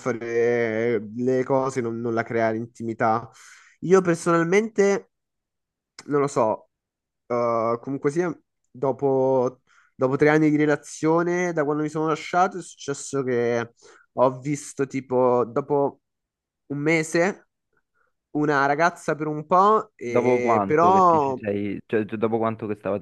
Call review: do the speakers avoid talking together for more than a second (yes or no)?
no